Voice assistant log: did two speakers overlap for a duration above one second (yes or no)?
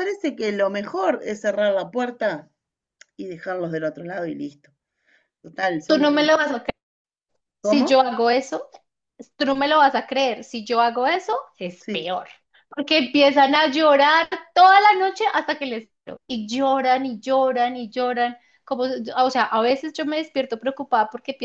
no